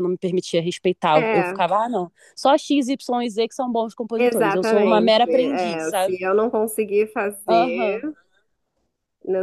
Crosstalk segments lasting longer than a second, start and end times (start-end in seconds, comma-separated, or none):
4.2-6.1